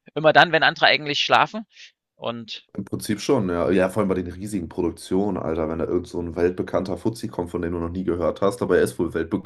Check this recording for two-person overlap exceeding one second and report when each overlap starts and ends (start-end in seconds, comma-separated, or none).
none